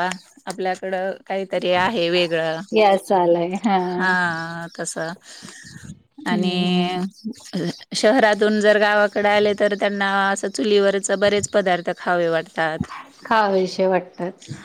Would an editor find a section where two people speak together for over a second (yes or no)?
no